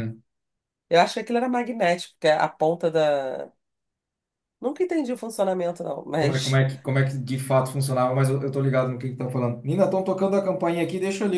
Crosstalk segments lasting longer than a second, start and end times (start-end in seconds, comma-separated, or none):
none